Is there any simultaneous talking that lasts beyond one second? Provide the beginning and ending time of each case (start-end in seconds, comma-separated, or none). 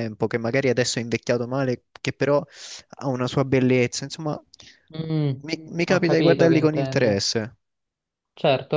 5.9-7.2